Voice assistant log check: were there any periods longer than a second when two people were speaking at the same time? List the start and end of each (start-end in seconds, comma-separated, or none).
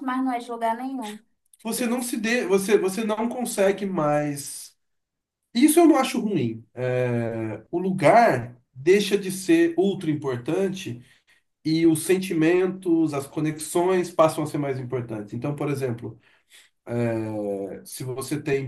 none